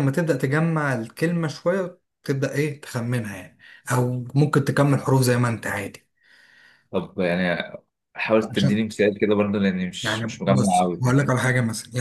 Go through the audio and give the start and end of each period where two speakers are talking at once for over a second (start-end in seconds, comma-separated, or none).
10.0-11.3